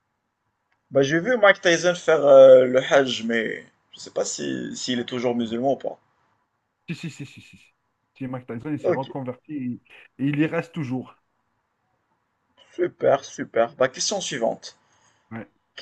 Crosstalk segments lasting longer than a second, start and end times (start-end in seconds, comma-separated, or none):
none